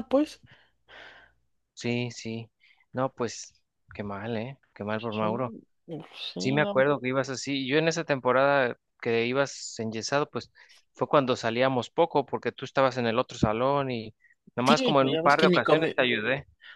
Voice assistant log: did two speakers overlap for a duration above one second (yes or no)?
yes